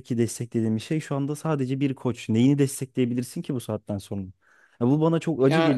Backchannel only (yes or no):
yes